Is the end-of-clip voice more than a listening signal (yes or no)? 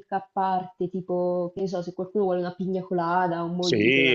yes